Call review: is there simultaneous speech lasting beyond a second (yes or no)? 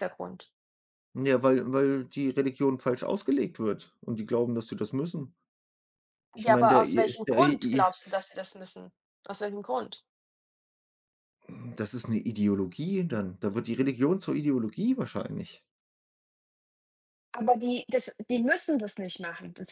yes